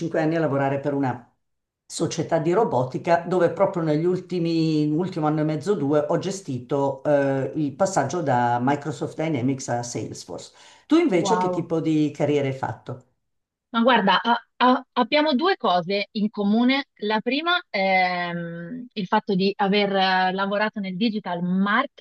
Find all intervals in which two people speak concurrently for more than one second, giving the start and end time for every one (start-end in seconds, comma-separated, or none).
none